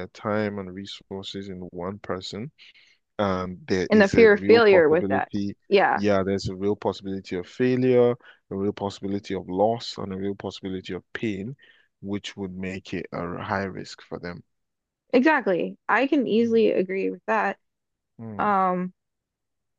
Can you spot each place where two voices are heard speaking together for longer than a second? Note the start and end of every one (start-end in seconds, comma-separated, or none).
3.9-5.3